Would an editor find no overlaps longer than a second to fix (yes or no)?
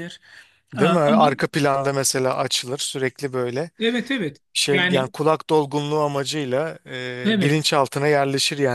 yes